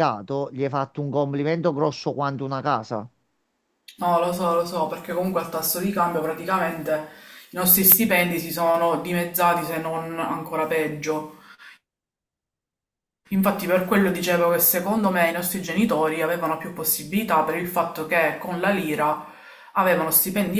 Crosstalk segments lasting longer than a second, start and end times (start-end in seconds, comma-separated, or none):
none